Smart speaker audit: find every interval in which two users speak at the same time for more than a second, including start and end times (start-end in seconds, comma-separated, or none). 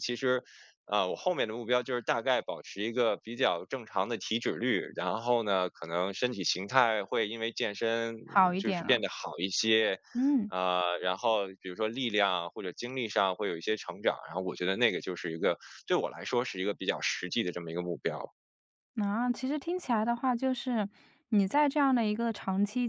none